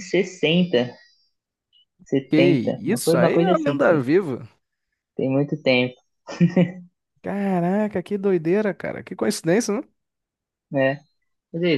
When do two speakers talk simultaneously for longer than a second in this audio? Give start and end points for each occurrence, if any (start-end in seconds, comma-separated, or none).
2.3-4.1